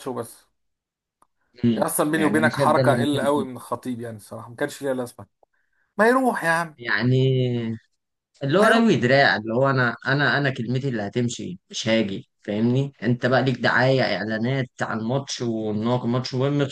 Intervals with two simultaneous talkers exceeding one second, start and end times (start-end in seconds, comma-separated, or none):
1.8-3.5